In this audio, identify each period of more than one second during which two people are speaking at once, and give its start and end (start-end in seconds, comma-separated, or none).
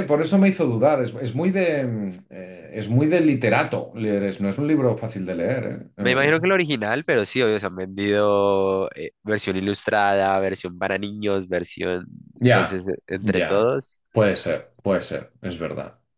12.4-13.8